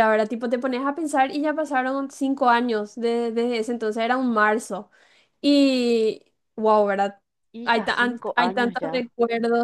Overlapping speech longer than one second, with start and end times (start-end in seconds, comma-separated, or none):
7.6-9.1